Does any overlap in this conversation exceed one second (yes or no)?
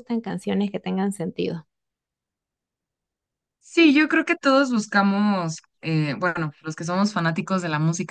no